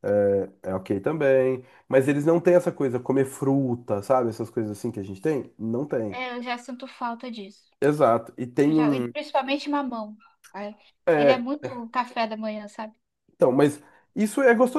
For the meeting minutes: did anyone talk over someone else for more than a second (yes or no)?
no